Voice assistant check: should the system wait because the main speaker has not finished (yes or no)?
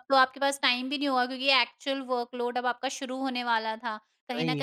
yes